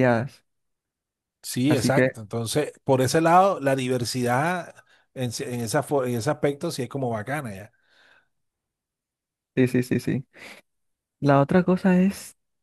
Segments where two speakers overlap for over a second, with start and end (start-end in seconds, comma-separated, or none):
none